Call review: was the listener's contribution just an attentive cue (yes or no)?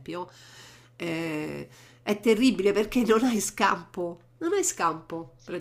no